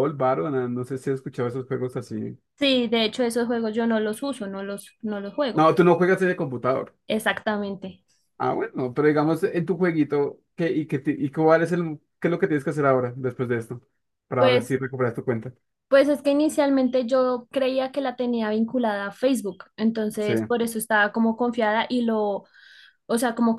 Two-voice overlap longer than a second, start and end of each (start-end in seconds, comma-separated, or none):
none